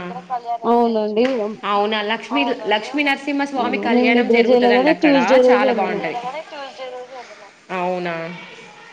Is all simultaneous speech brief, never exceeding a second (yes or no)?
no